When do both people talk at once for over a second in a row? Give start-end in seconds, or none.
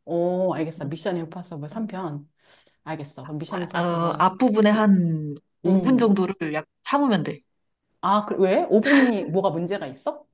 none